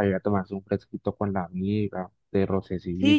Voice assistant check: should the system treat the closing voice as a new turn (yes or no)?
yes